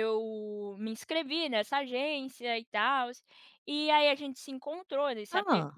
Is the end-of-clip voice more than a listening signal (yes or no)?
no